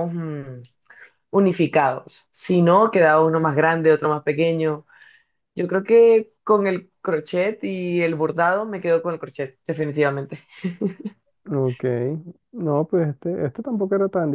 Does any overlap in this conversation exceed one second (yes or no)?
no